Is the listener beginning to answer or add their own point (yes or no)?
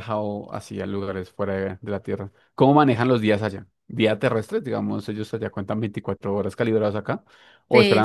yes